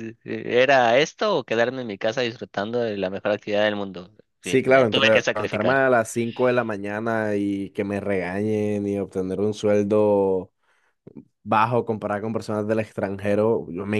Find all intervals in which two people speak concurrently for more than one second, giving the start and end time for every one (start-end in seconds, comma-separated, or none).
4.4-5.8